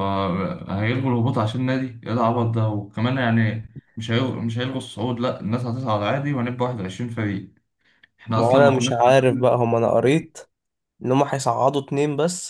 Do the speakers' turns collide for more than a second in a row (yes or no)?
yes